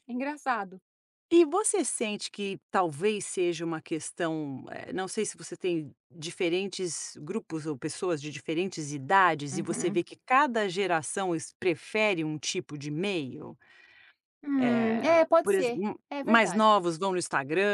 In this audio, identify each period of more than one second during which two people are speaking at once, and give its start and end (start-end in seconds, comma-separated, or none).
14.6-16.8